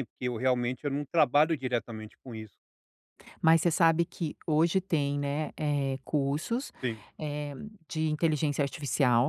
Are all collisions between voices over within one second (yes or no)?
yes